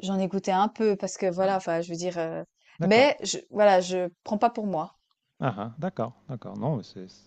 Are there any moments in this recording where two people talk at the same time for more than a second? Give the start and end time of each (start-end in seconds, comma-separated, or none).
none